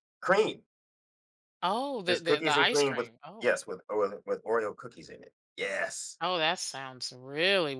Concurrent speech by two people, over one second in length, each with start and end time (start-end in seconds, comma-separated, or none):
2.1-3.5